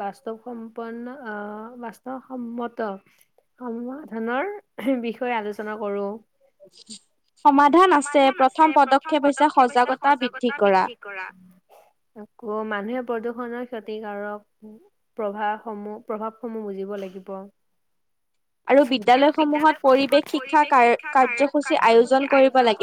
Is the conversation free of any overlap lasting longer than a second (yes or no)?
no